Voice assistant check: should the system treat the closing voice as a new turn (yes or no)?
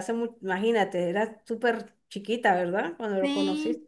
yes